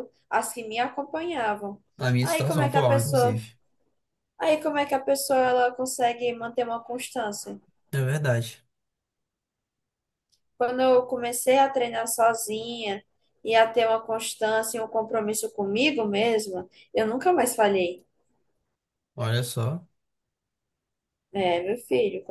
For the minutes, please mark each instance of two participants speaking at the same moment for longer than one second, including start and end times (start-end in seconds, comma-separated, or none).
2.2-3.4